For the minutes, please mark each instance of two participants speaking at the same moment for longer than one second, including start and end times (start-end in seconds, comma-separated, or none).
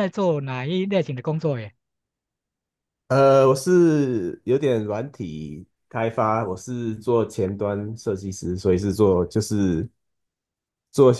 none